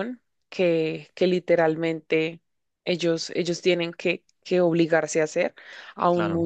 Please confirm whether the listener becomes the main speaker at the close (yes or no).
no